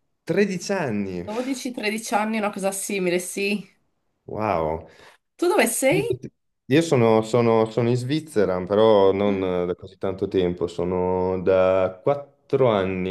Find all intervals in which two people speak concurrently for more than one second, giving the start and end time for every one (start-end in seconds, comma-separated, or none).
none